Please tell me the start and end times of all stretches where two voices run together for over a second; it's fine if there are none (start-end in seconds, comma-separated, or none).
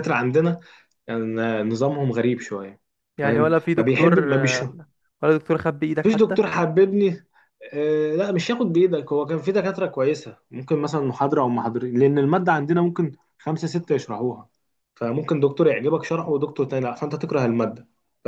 3.2-4.6